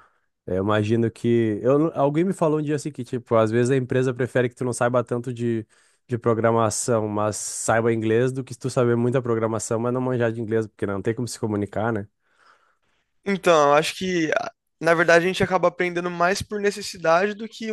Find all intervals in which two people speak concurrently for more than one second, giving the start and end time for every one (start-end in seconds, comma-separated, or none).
none